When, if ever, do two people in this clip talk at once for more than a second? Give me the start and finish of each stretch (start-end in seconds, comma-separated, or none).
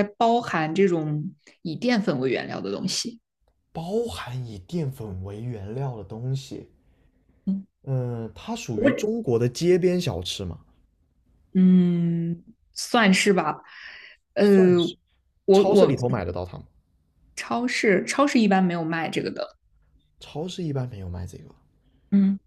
none